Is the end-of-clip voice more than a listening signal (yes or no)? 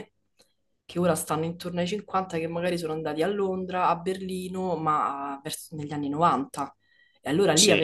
no